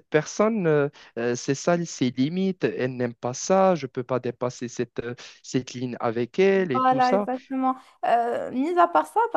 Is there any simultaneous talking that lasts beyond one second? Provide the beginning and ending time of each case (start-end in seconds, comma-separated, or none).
none